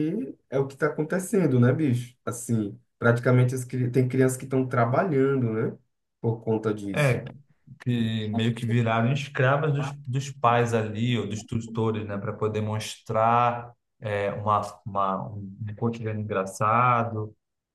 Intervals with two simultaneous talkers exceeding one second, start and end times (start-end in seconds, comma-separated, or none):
none